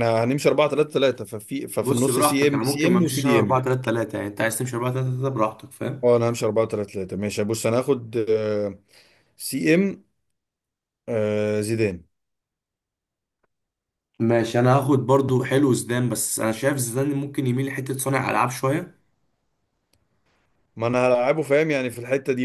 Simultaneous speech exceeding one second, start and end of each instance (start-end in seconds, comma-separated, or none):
1.8-3.6